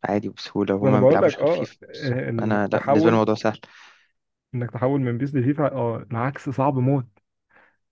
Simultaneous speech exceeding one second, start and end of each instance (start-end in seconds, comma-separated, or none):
0.8-3.3